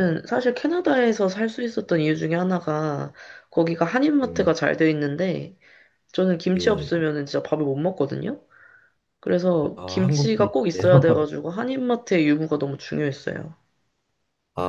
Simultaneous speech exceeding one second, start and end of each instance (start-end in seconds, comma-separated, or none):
9.8-11.2